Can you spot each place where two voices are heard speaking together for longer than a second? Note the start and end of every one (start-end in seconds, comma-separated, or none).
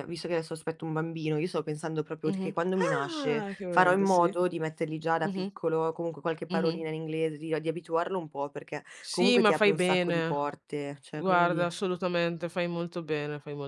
2.3-4.4, 9.0-10.4